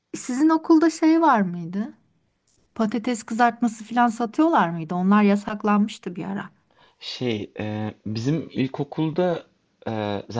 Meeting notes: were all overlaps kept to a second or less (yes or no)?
yes